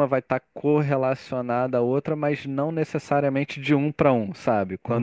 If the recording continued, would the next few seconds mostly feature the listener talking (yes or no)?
no